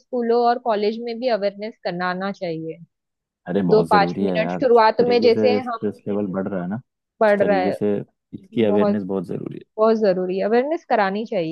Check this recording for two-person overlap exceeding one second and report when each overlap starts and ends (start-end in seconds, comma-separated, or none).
3.7-5.9